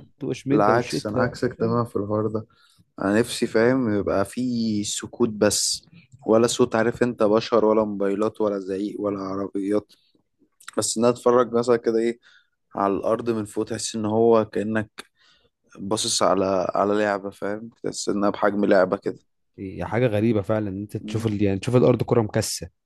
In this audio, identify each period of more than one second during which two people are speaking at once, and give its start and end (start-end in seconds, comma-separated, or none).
0.5-1.8